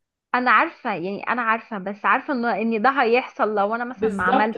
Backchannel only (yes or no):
no